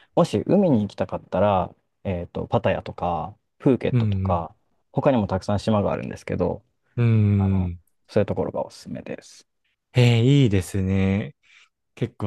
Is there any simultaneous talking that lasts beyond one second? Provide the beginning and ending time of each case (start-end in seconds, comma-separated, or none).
none